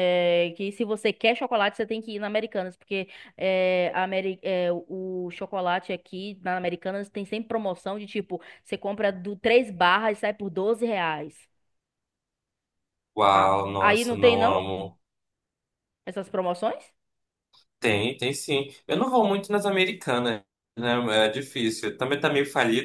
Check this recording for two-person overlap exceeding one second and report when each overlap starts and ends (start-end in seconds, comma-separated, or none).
13.2-14.7